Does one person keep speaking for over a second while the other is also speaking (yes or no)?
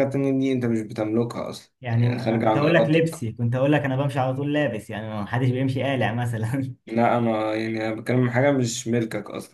yes